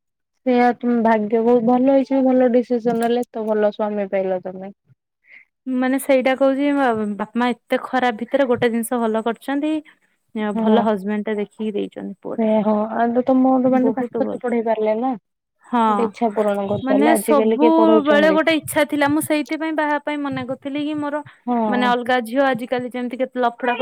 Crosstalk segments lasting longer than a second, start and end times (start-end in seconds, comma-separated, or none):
16.9-18.4